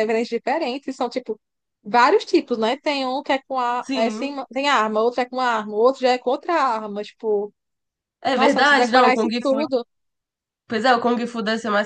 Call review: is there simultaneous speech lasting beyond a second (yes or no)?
yes